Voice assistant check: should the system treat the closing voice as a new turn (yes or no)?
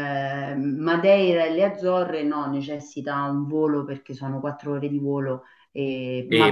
yes